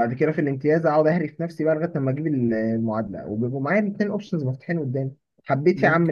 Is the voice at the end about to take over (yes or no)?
no